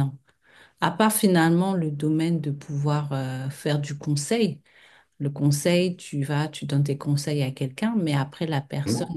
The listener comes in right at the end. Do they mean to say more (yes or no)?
no